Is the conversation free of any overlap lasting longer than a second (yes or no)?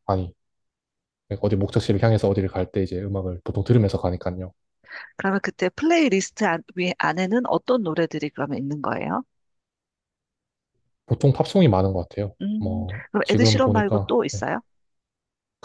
no